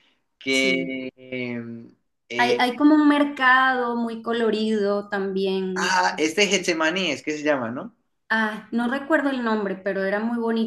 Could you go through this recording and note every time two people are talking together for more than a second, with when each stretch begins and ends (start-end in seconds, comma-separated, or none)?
none